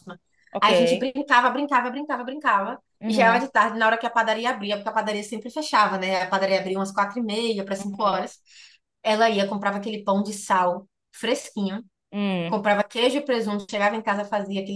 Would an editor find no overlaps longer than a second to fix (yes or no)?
yes